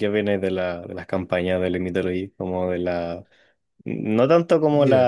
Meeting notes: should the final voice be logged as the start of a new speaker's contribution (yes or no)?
no